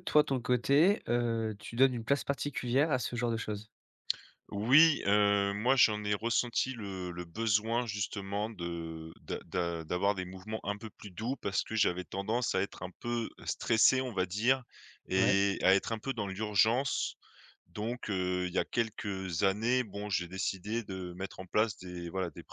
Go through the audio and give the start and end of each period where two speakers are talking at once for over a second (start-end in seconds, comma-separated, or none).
none